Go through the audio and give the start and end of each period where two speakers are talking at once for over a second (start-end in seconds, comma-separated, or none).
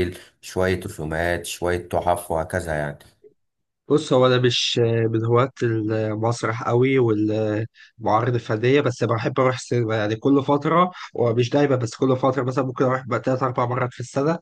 none